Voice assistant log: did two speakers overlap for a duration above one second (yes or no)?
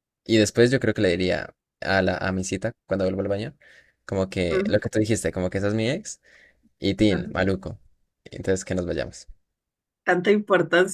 no